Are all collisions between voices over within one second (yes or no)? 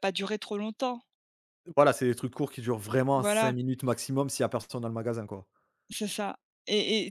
yes